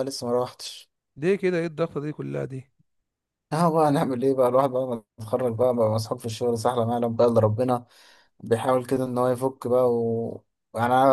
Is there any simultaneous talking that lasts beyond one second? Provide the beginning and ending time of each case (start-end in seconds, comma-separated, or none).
none